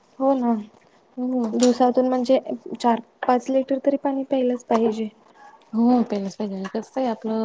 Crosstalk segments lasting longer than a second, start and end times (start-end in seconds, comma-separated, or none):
none